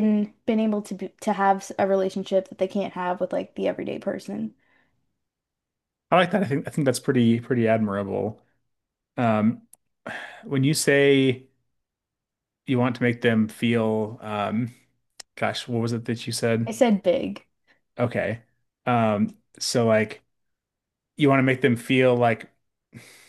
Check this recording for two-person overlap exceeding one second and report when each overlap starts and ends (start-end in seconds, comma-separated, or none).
none